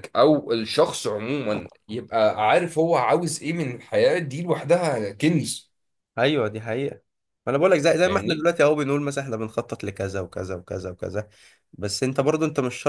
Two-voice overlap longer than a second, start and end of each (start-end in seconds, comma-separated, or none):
none